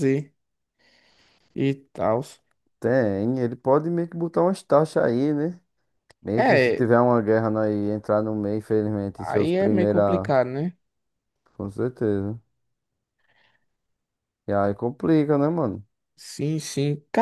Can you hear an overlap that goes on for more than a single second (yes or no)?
yes